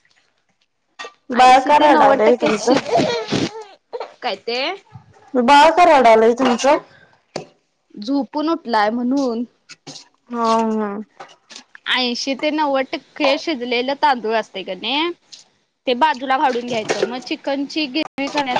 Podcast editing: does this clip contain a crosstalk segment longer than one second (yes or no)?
yes